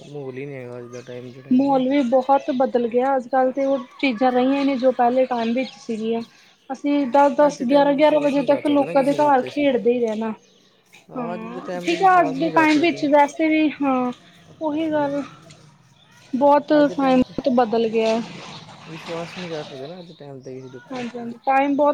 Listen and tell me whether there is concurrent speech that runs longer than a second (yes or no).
yes